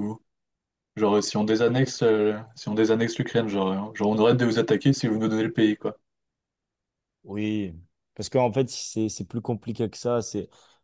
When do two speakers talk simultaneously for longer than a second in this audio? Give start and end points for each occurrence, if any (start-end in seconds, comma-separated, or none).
none